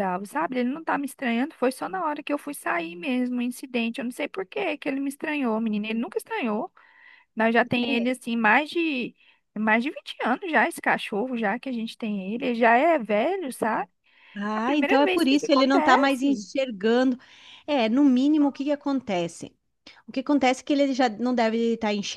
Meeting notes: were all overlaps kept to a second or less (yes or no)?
no